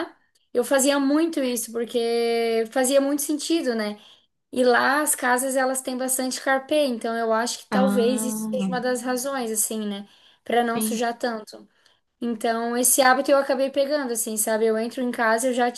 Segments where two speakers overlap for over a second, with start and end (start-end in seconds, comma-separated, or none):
7.7-8.9